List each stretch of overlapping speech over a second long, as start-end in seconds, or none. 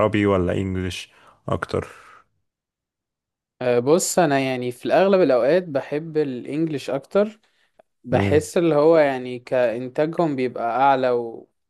none